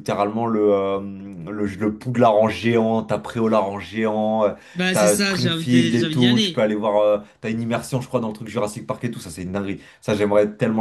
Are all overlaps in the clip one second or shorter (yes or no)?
no